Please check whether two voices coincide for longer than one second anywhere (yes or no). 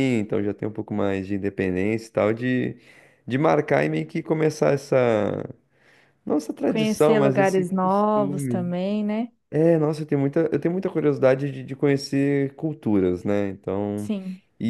yes